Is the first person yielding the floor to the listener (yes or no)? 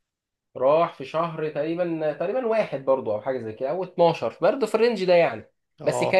no